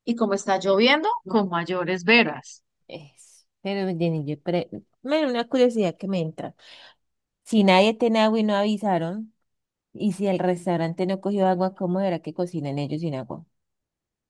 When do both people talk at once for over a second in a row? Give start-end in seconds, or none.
none